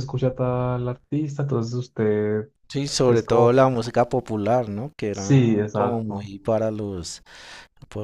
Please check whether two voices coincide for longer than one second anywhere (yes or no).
yes